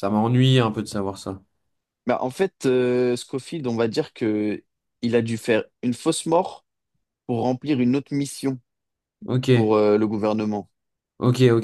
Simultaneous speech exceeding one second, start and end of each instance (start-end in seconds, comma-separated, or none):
none